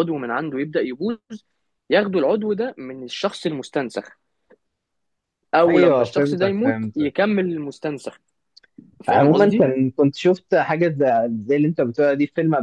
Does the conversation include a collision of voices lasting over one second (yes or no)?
yes